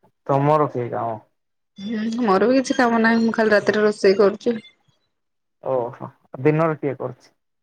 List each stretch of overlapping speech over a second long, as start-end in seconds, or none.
none